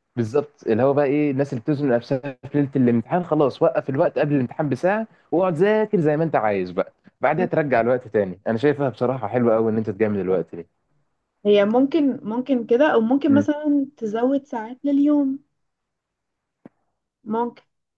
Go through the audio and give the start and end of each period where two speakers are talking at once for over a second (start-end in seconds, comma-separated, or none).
none